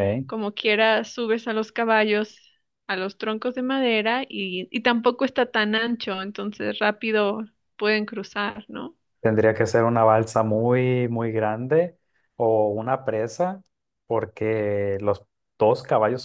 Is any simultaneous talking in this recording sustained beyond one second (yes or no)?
no